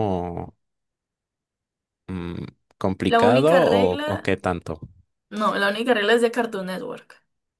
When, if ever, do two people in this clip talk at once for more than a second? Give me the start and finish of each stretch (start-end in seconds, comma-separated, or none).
3.1-4.4